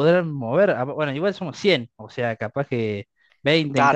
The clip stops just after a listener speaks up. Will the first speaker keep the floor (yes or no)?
no